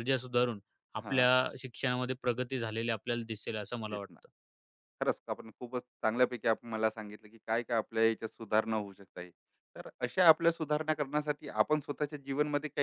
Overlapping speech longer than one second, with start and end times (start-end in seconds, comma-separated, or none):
none